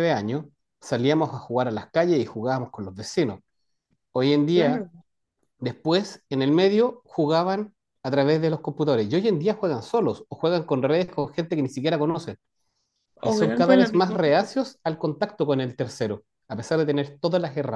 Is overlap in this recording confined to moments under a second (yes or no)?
no